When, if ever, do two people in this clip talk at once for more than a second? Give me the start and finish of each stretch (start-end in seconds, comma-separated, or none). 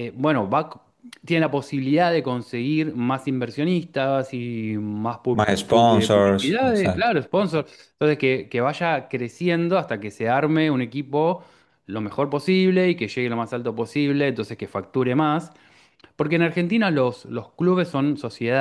5.3-7.1